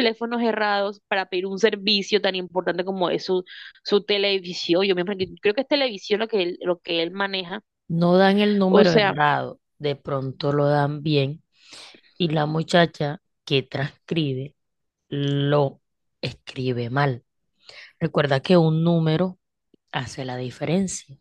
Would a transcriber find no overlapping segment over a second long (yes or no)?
yes